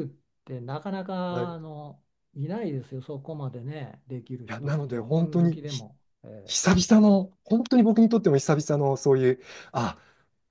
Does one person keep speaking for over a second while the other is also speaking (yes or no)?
yes